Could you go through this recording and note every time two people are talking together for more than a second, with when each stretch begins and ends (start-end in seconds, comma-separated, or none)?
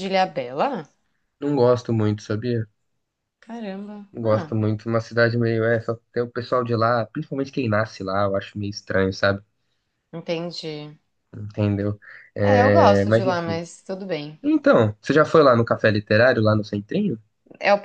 12.4-13.6